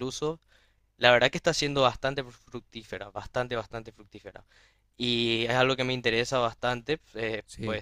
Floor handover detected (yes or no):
no